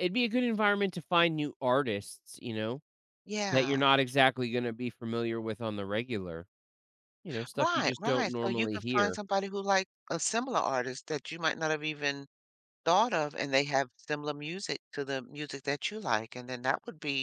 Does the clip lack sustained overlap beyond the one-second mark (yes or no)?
no